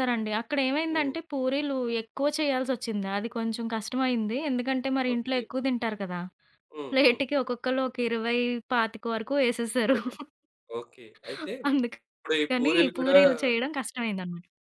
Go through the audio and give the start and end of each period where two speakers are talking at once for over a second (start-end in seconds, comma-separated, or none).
11.7-13.2